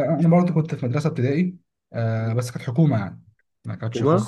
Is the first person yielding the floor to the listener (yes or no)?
no